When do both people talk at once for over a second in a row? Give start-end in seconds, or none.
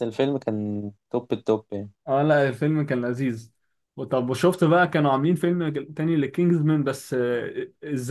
none